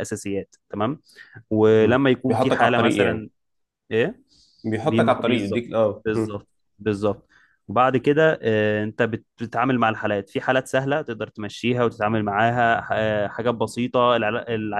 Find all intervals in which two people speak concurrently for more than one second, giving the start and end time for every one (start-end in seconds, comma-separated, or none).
1.8-3.3, 4.8-6.4